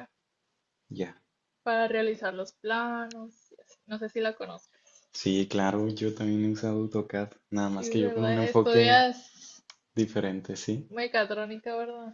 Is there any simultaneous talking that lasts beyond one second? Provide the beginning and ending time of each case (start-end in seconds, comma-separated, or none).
7.8-9.1